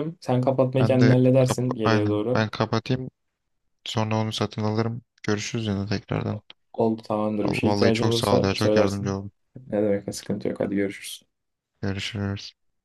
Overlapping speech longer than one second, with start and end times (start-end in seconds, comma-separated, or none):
0.8-2.5, 7.4-9.2